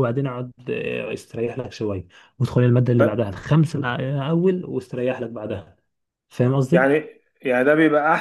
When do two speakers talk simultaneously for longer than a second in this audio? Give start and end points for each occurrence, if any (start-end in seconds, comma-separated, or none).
none